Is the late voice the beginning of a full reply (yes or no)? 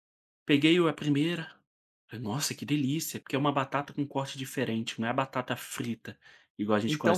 yes